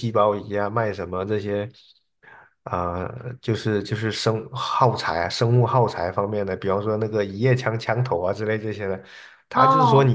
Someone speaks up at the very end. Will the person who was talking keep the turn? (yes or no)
yes